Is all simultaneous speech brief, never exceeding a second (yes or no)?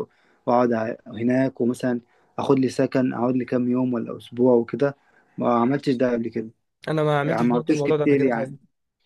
no